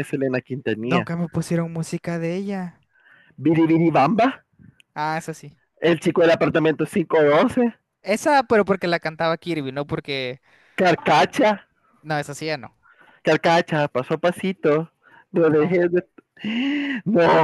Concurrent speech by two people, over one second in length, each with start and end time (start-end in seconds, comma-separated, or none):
none